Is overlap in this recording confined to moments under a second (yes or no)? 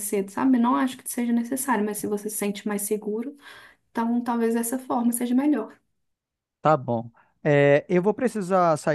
yes